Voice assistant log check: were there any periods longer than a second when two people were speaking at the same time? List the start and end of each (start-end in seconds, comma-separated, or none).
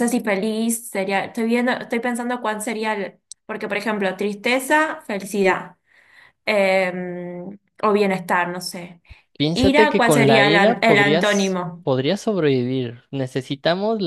9.5-11.9